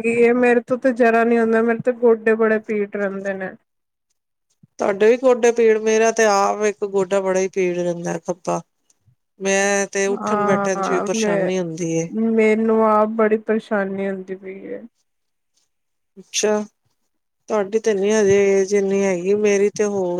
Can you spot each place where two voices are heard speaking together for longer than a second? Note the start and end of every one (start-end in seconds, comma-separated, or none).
10.2-12.1